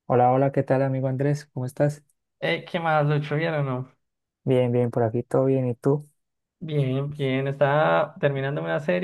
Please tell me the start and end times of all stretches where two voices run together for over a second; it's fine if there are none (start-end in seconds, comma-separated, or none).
none